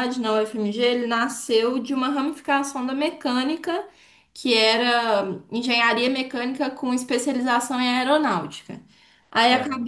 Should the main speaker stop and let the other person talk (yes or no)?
no